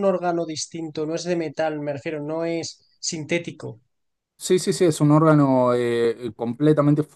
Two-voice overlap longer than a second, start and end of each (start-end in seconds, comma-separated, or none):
none